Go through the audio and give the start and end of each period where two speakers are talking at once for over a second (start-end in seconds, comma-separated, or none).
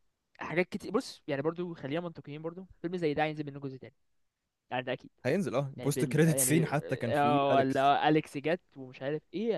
5.8-7.9